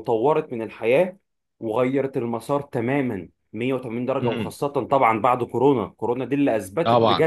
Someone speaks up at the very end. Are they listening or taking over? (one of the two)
taking over